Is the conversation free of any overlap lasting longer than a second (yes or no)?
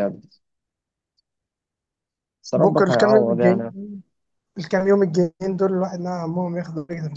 no